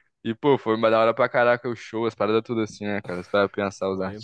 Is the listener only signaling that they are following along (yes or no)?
no